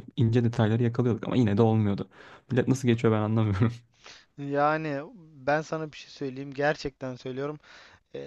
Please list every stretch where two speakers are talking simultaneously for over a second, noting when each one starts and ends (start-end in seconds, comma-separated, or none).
none